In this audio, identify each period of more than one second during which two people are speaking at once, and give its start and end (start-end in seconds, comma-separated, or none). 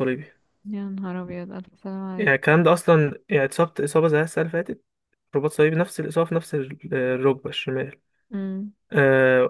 none